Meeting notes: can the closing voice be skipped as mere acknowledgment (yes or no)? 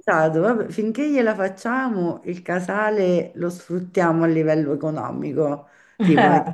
yes